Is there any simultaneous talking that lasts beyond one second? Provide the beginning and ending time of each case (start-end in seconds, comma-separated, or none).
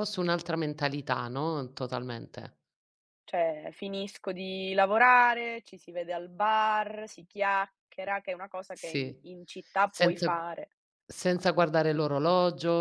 none